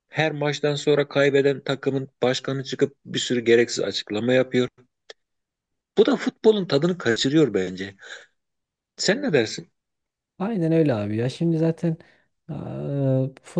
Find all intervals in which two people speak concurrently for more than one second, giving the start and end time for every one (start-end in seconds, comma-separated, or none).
none